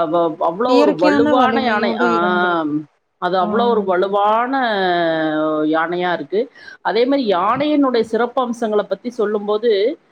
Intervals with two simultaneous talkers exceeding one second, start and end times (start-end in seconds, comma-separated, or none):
0.7-2.7